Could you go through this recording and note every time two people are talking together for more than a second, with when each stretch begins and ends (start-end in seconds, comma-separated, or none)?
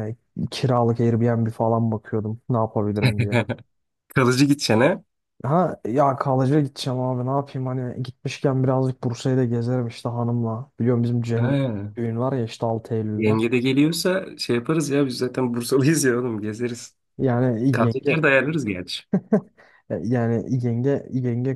none